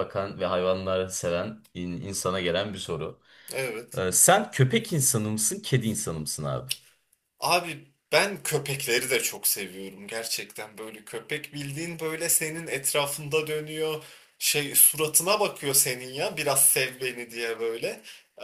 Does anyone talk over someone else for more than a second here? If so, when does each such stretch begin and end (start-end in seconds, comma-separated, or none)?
none